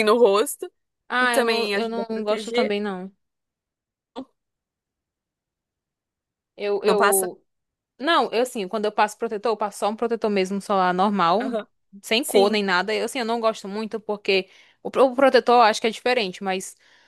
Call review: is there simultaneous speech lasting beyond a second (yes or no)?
yes